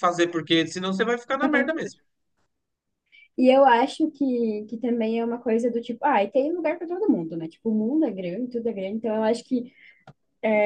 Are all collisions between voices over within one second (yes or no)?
yes